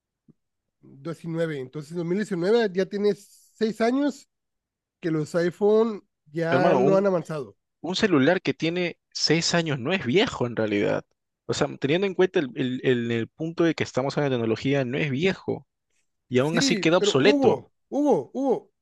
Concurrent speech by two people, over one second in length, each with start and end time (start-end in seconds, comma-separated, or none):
16.4-17.6